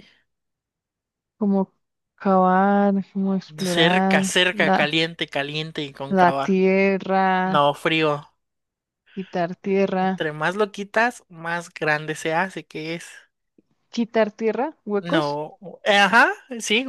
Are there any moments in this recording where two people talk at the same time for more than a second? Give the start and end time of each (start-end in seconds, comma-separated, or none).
3.6-4.9